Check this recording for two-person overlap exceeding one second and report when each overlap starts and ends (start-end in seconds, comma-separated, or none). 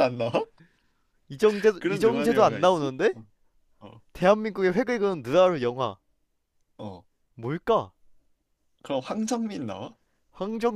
1.8-3.1